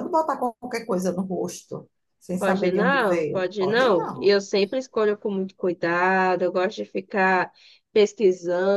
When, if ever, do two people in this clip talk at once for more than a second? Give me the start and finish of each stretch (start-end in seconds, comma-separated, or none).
2.4-4.3